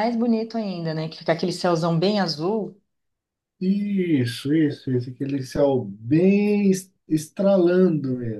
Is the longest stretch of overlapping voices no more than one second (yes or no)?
yes